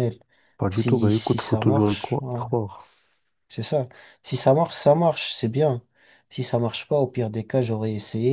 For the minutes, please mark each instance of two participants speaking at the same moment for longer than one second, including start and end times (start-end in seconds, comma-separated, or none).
0.7-2.4